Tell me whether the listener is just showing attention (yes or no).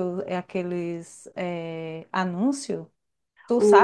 no